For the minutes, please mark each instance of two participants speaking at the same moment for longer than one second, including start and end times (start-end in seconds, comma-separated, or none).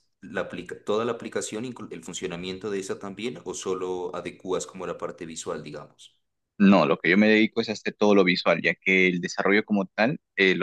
none